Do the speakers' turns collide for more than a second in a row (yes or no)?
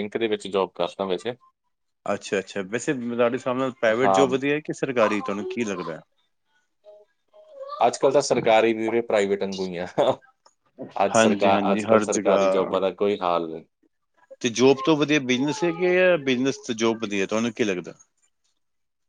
yes